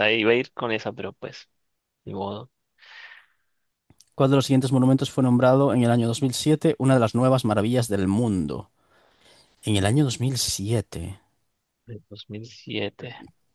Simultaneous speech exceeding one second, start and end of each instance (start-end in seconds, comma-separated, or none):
none